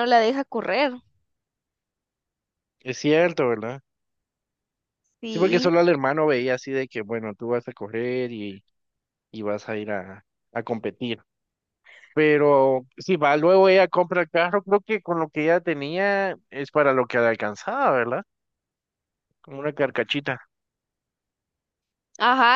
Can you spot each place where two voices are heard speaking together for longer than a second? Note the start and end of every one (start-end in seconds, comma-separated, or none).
none